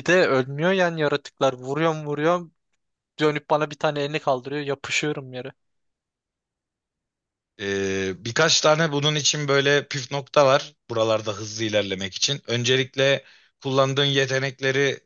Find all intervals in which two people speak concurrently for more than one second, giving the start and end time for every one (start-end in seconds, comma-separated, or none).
none